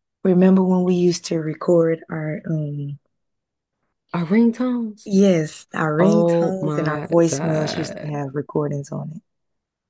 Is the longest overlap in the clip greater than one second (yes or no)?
yes